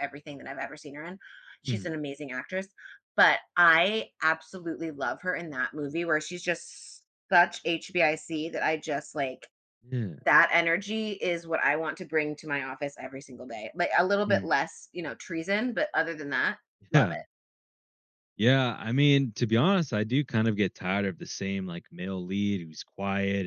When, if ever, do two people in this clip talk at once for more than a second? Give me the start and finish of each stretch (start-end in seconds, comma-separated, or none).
none